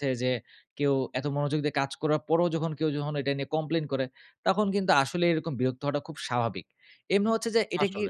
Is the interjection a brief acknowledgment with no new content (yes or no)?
yes